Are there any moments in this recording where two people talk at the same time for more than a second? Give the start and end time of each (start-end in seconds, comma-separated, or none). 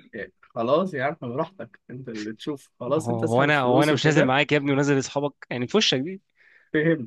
2.9-4.3